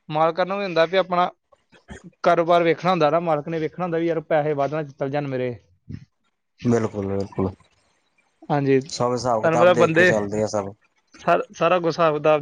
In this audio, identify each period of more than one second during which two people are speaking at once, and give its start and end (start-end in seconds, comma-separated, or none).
8.9-10.1